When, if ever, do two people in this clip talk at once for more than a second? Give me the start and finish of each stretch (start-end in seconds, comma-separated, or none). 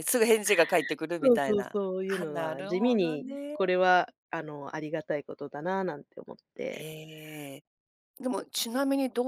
1.2-3.6